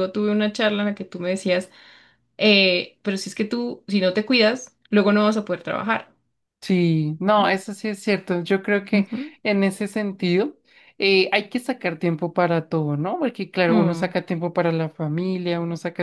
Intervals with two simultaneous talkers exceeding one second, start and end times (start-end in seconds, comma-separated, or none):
none